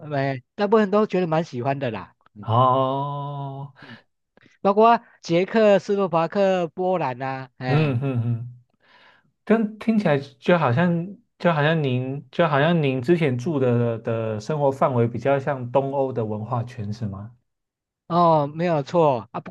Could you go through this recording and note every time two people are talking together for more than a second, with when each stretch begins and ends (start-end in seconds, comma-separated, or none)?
none